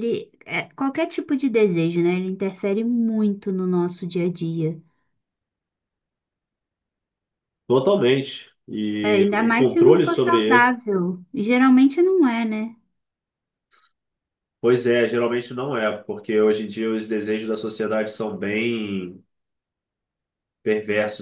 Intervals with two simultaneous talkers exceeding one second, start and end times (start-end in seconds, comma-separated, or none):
9.0-10.8